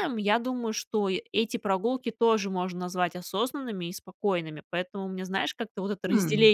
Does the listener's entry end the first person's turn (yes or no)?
no